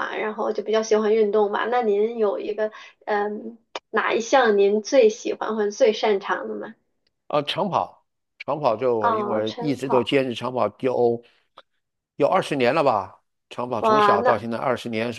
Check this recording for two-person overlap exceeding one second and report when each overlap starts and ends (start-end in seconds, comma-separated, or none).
9.0-10.2